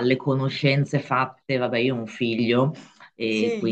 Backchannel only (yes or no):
yes